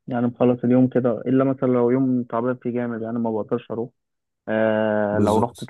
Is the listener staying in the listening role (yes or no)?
yes